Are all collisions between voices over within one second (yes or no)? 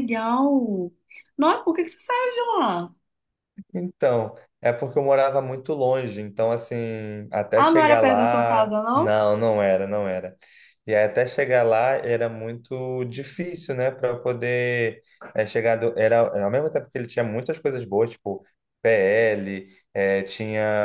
no